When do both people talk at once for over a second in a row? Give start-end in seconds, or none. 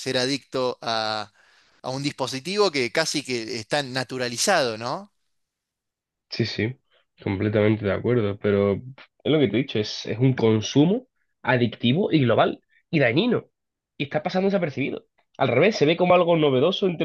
none